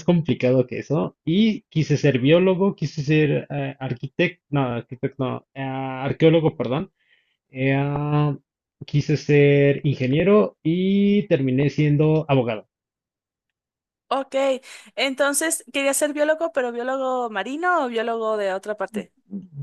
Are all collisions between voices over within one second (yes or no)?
yes